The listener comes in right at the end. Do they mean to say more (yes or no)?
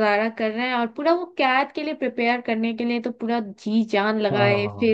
no